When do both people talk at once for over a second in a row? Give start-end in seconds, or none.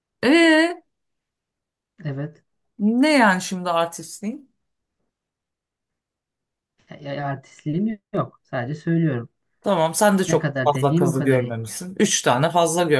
10.3-11.6